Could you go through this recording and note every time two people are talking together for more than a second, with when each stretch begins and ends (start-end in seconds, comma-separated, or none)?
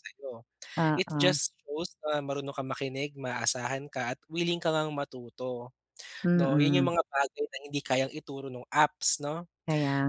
none